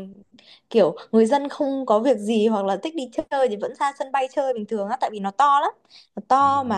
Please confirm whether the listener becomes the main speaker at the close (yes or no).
no